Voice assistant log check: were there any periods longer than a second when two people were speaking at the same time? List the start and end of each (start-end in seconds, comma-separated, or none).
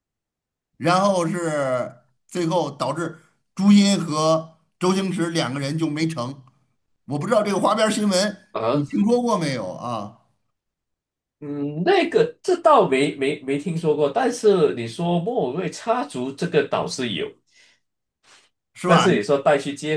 none